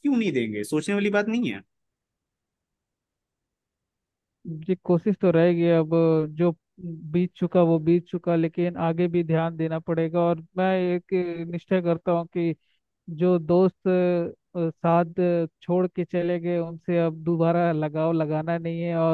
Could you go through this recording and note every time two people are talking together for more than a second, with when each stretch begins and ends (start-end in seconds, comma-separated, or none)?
none